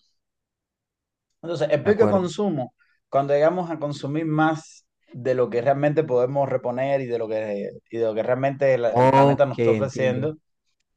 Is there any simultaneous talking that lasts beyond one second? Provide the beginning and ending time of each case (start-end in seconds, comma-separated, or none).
8.9-10.3